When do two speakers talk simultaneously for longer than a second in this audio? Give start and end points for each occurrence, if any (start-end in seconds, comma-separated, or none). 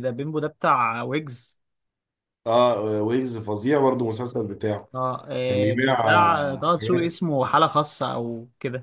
5.5-7.1